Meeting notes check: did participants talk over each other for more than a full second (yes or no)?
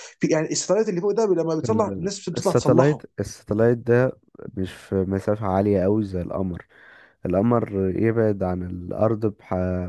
yes